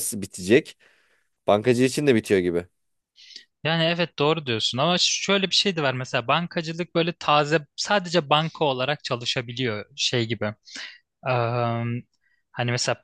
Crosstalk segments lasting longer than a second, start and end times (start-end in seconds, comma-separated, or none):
none